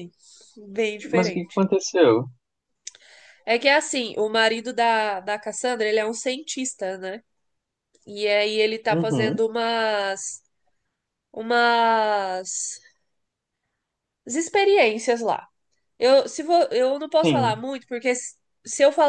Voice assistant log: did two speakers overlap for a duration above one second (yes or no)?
no